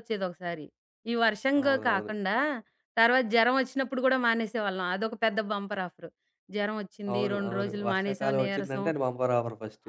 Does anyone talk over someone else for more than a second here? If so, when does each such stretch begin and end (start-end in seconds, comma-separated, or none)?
7.1-8.9